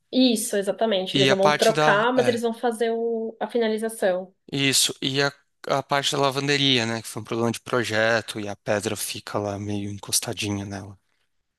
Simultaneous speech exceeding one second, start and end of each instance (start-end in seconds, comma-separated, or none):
1.1-2.4